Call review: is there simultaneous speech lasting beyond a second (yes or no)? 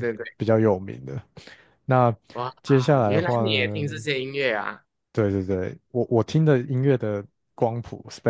yes